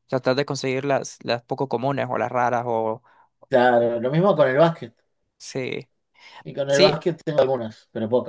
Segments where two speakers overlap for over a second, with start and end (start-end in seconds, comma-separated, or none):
none